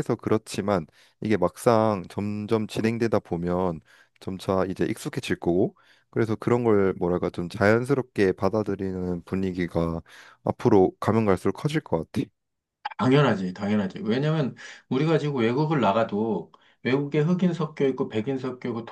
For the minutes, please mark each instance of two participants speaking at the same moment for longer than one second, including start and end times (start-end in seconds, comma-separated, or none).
none